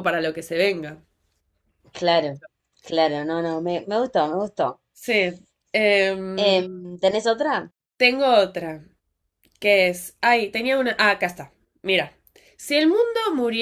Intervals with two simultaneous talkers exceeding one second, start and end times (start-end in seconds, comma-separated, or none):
none